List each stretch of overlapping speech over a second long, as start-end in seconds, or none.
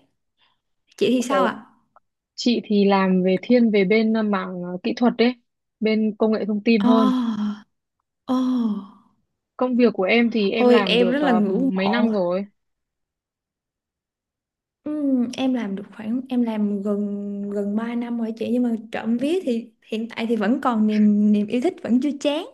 10.6-12.1